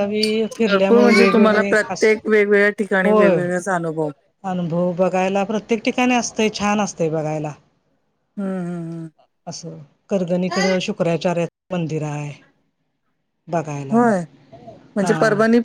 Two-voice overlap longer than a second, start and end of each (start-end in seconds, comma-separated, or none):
0.7-2.1